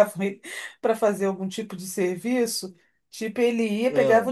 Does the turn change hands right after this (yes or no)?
no